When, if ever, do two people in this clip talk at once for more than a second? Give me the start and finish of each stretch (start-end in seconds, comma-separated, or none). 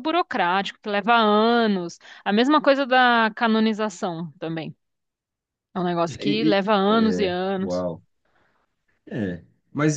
6.0-7.8